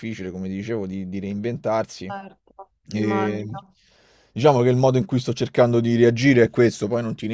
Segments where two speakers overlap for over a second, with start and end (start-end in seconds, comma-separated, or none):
none